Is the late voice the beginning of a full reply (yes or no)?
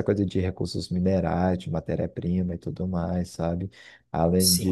no